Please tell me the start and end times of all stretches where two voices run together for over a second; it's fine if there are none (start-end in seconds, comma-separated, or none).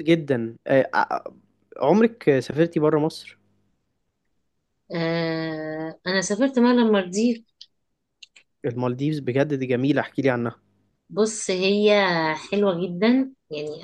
none